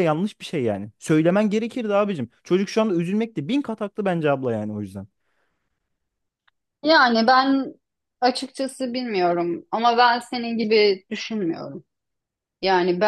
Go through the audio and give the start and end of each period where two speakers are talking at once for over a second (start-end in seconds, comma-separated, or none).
none